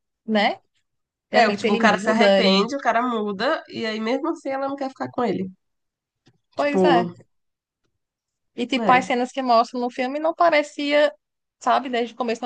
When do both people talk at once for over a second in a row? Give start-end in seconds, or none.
1.3-2.7